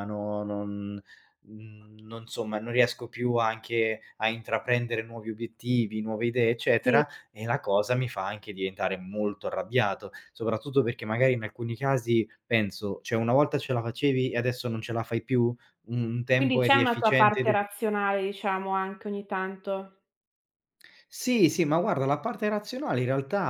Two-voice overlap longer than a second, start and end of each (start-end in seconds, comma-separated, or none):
16.3-17.6